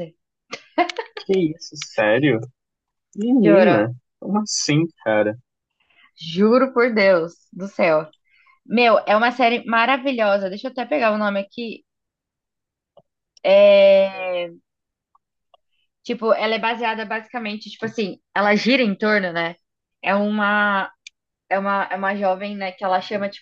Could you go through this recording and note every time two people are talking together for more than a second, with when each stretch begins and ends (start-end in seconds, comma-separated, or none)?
none